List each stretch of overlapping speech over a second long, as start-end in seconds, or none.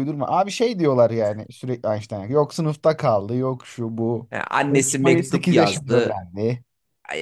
4.7-6.2